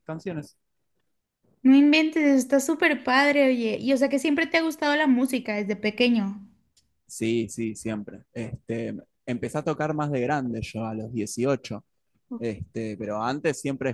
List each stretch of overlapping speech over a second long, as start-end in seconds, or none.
none